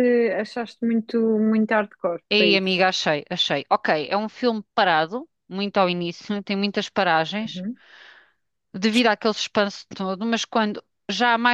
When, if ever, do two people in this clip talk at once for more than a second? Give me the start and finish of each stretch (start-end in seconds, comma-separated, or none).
none